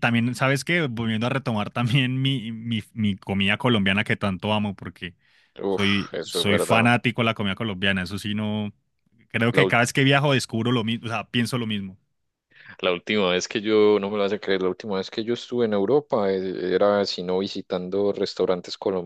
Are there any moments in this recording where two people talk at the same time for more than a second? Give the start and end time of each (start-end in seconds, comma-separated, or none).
5.7-6.9